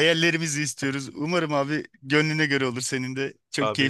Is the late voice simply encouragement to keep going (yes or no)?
no